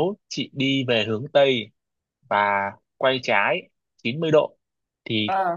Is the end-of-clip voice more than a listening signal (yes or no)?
no